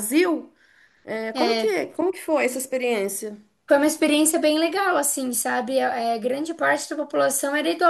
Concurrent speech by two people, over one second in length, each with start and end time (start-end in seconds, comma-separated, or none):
none